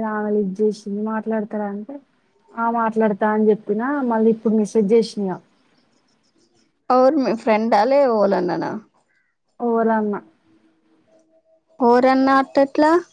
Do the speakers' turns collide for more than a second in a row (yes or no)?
no